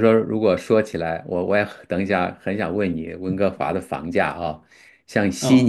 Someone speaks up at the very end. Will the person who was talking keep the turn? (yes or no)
yes